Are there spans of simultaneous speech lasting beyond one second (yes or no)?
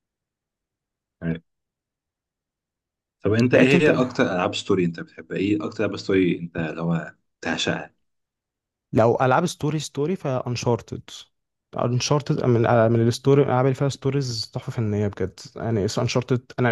no